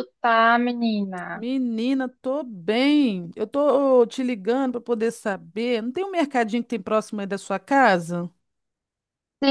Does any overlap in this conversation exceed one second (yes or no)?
no